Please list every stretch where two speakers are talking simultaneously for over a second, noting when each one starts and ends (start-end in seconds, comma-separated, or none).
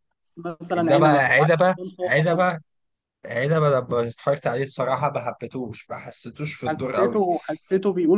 0.8-2.5